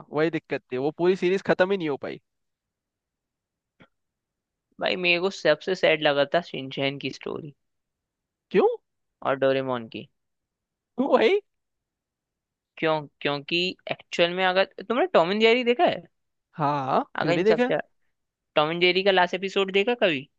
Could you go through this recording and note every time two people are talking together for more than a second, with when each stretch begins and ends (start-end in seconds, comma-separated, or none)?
none